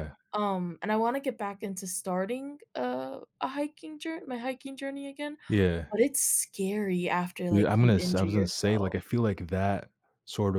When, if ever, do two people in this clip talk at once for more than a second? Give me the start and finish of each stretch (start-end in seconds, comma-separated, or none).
7.5-8.9